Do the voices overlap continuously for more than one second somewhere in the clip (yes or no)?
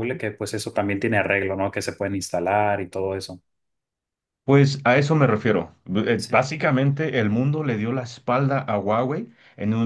no